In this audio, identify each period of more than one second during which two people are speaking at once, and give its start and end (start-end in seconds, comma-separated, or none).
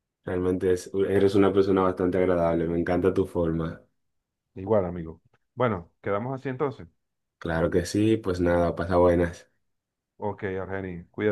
none